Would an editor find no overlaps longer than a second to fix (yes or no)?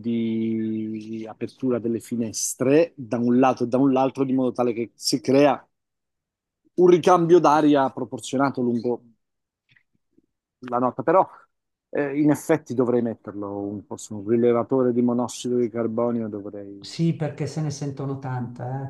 yes